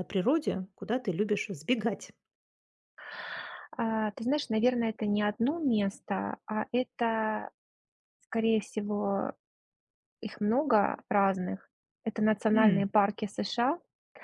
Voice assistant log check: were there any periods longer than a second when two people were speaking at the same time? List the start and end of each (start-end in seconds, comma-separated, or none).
none